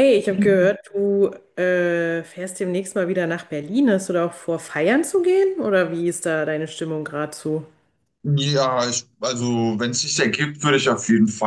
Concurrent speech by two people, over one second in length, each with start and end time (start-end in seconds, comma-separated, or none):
none